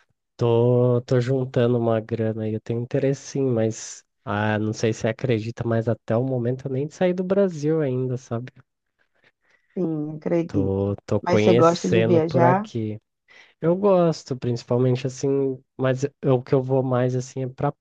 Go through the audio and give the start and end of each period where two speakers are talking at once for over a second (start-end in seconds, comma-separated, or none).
10.5-12.7